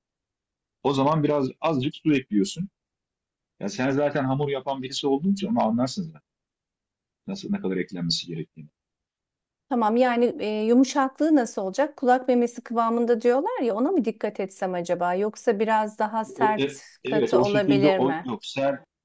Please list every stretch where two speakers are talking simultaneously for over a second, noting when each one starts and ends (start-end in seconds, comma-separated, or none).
16.4-18.3